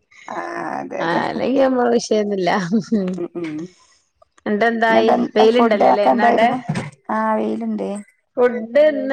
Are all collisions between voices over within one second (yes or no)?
no